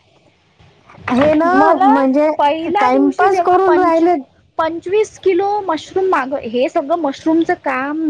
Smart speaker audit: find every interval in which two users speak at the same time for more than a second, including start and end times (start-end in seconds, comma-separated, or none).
2.8-4.0